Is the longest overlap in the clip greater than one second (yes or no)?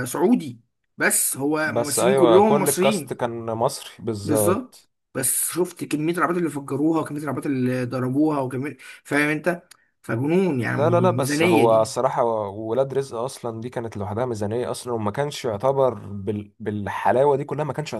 yes